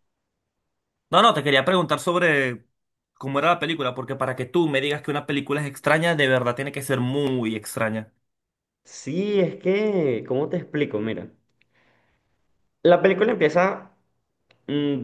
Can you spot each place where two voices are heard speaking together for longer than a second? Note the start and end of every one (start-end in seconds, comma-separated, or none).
none